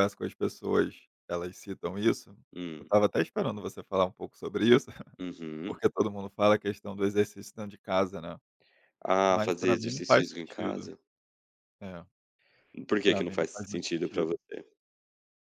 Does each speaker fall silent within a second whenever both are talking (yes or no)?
no